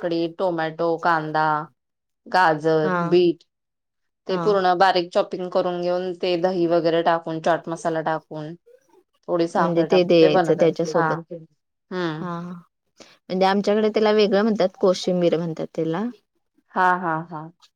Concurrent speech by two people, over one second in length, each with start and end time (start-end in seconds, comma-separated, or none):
9.6-11.1